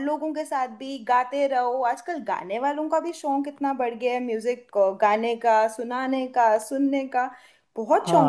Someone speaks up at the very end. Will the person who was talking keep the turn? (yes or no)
no